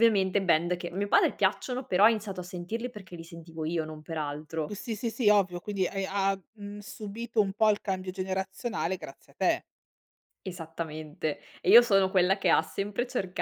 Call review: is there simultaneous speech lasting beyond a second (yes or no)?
no